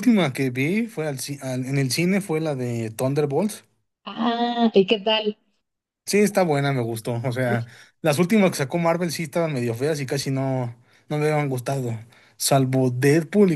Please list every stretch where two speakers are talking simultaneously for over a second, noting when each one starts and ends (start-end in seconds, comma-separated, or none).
none